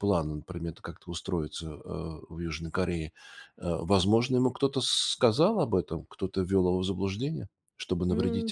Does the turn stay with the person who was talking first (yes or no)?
no